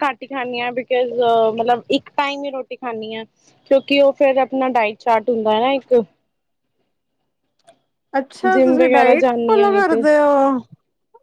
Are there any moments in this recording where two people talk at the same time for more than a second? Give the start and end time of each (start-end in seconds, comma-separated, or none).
8.5-10.0